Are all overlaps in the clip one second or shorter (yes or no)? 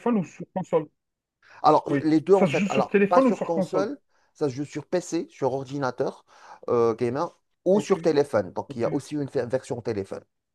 no